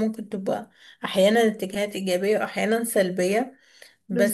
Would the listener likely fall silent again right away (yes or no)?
yes